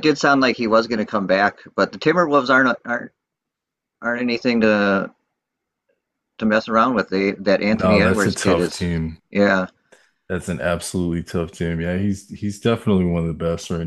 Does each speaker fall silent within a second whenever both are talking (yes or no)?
no